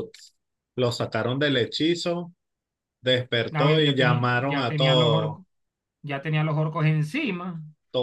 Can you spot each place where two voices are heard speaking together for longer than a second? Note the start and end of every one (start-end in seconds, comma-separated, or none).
3.5-5.4